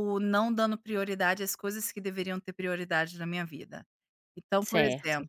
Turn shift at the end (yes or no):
no